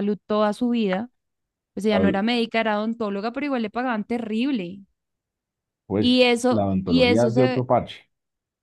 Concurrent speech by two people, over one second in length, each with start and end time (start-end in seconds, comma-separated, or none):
6.0-7.7